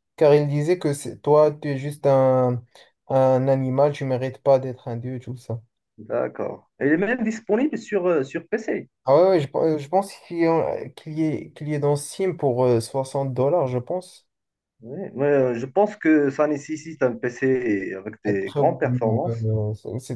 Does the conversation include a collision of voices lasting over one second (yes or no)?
yes